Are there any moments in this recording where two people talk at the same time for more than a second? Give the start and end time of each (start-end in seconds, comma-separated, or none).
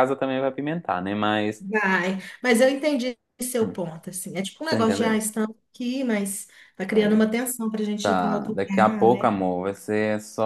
8.0-9.3